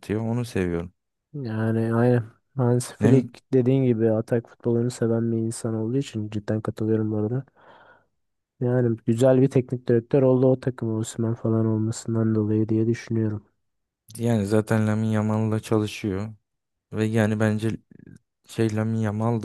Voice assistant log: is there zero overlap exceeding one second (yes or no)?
yes